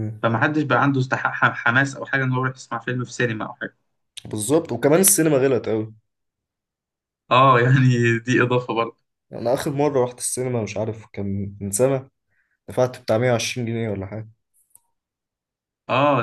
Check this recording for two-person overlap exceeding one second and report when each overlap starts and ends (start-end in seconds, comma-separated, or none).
none